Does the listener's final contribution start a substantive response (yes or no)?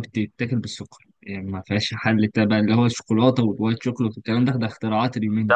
yes